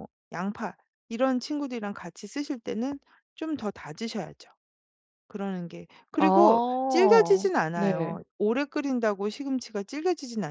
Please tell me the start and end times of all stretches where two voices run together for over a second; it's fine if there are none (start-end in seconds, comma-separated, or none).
6.2-8.2